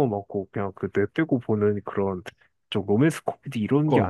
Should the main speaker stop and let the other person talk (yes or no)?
yes